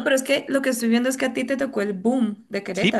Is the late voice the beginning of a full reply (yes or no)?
yes